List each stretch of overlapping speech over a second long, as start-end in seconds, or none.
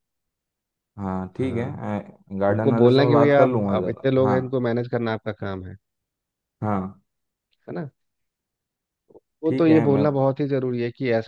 2.5-4.4